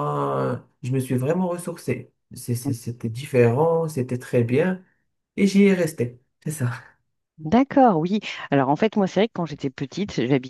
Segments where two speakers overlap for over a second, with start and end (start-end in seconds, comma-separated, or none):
none